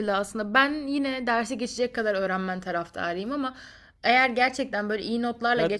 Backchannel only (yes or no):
no